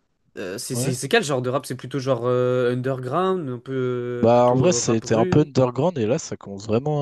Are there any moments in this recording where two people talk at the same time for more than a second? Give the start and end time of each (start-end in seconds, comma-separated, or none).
4.2-5.5